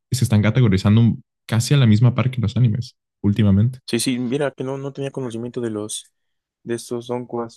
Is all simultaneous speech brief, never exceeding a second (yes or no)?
yes